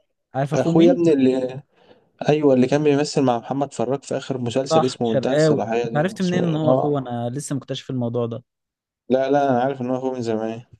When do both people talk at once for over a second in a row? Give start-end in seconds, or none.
4.7-7.0